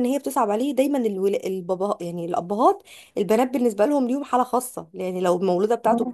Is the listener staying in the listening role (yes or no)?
yes